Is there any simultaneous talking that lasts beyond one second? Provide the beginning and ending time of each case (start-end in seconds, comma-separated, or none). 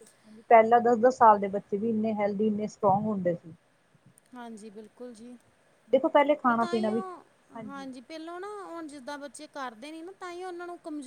none